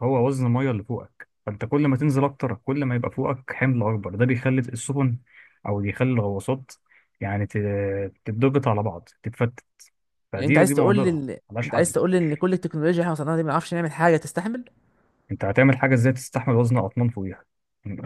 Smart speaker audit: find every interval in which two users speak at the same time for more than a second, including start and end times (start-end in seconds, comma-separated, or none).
10.3-11.9